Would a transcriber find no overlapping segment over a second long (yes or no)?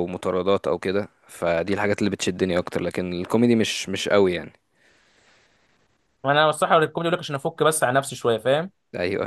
yes